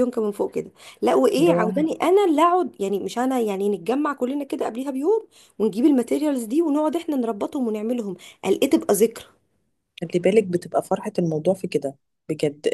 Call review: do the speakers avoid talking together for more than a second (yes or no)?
yes